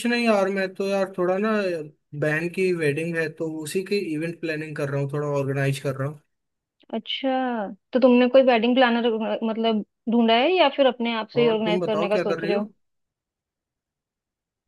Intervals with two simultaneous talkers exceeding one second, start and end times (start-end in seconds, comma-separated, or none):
11.4-12.6